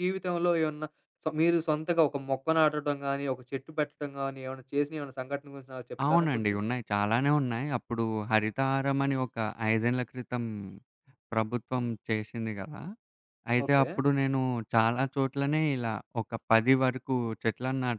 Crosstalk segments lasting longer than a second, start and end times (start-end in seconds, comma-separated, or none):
none